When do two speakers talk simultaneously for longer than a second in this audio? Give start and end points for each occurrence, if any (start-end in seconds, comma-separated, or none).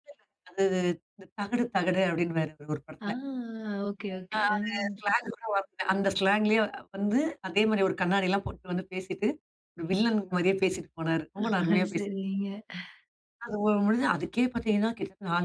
none